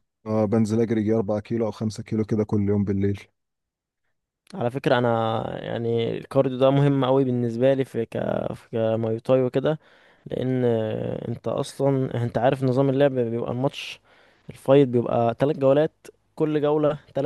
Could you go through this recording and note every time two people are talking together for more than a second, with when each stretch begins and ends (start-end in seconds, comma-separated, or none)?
none